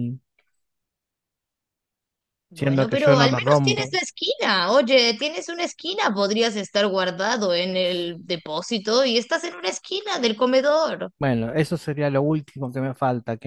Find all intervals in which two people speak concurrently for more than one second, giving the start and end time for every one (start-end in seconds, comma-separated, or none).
2.5-3.9